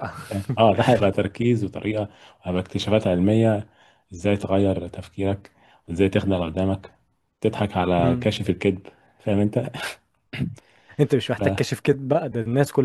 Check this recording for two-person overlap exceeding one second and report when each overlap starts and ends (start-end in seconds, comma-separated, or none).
none